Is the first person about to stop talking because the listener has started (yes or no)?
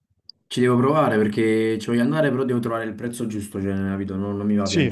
yes